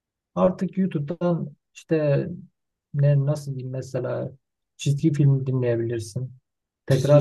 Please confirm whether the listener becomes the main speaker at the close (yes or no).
no